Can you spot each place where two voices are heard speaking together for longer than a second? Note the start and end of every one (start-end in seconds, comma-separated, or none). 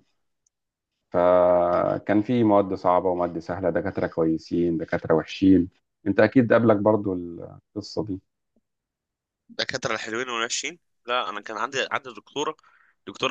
none